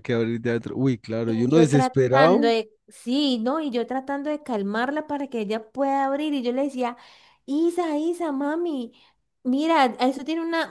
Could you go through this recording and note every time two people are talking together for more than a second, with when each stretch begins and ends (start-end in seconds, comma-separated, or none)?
1.2-2.5